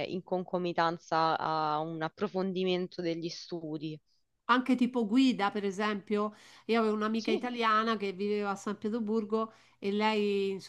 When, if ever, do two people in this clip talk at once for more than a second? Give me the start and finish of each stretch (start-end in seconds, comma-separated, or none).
none